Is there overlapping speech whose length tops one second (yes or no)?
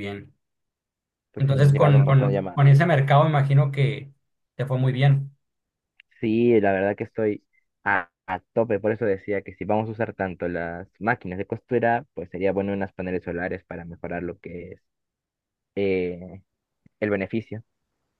yes